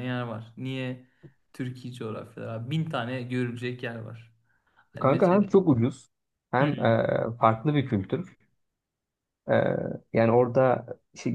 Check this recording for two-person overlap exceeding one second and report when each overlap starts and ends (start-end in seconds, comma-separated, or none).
none